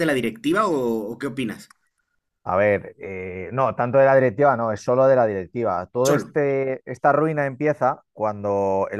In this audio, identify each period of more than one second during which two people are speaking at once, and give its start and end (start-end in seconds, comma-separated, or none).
none